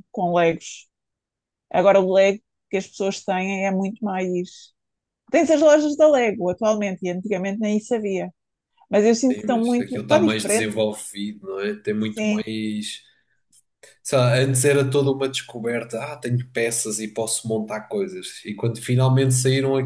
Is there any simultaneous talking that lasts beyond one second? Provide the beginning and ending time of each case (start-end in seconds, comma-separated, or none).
9.3-10.7